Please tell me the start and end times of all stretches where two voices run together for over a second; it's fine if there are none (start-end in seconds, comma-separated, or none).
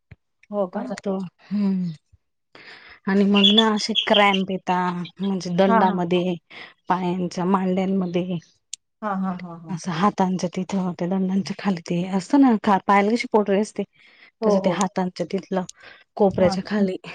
none